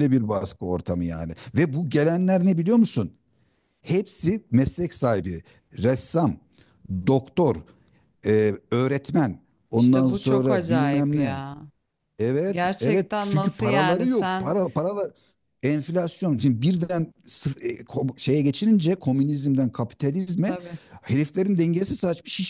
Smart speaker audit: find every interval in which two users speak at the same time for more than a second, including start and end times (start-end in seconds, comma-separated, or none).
9.7-11.4, 12.5-14.6